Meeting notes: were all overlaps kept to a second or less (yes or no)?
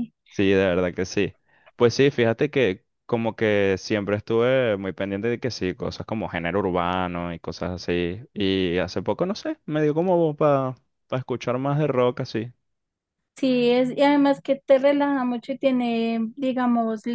yes